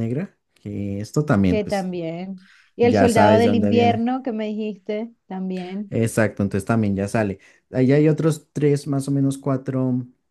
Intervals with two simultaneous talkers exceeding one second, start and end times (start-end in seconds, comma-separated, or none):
2.8-4.0